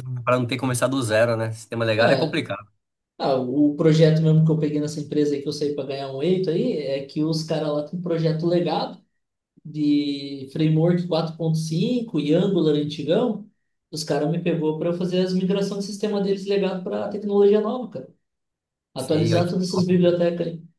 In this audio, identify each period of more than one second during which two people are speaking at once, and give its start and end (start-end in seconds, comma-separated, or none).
19.0-20.2